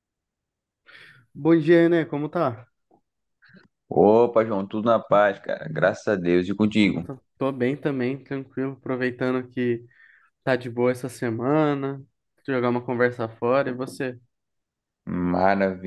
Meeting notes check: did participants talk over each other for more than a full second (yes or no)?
no